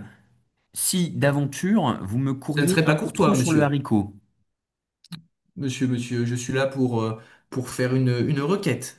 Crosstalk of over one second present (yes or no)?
yes